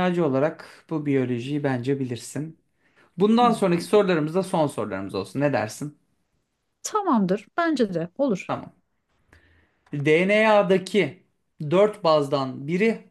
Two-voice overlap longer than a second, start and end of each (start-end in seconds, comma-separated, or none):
none